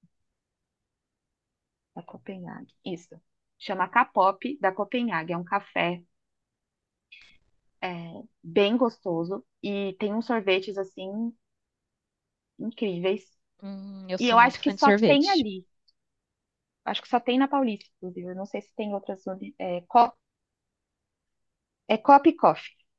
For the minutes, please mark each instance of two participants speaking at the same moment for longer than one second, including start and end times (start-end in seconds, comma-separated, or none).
14.2-15.4